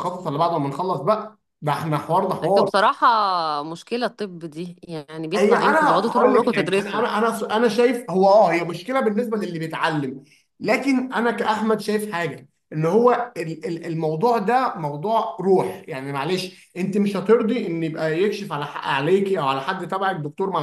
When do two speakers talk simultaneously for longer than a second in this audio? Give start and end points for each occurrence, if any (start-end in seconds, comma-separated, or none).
5.4-7.0